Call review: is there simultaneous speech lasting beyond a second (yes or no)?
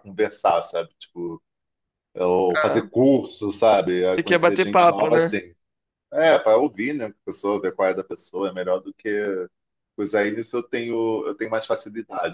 yes